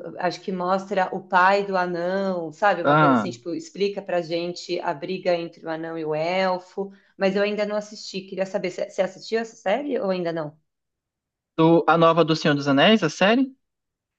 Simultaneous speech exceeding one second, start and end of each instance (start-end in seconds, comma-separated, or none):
none